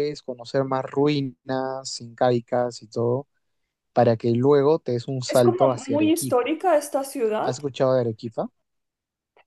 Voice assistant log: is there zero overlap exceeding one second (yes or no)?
no